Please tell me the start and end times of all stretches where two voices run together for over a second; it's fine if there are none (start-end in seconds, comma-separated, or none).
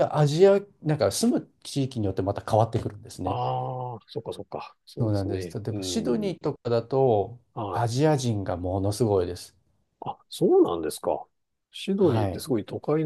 5.0-6.3